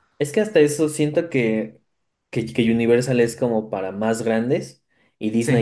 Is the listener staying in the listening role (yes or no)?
yes